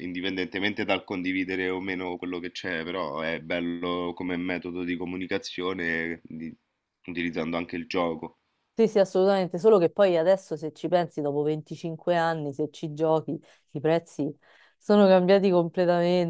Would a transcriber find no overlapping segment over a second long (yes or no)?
yes